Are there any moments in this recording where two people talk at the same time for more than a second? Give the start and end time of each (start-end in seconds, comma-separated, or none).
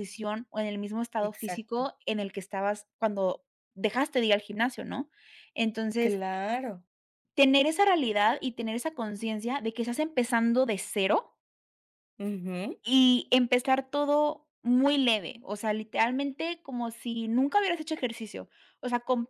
none